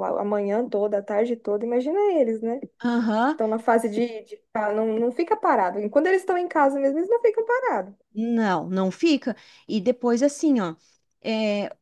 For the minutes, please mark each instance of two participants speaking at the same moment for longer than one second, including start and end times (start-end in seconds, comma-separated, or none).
none